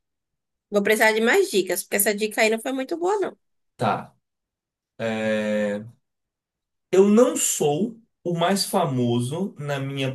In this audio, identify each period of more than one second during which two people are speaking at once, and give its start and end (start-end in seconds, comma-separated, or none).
none